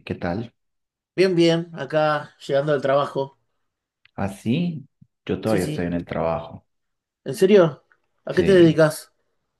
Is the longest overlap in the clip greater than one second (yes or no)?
no